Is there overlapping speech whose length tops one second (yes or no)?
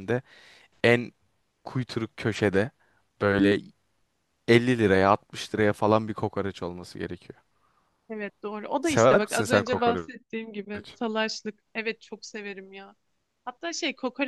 yes